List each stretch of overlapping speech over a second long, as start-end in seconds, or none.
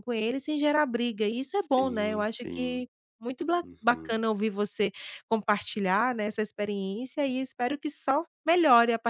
1.6-2.9